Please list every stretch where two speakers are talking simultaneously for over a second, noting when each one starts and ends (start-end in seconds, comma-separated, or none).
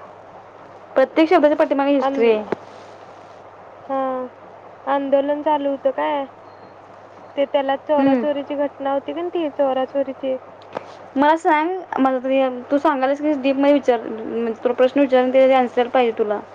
none